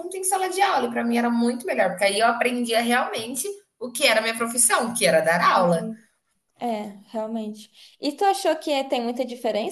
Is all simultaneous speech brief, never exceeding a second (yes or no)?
yes